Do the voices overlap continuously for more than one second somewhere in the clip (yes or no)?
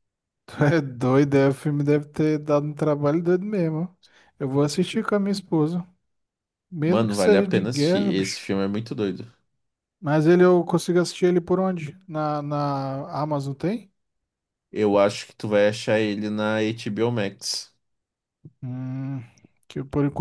yes